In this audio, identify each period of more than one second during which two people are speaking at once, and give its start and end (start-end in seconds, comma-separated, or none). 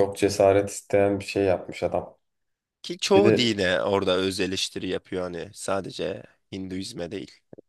none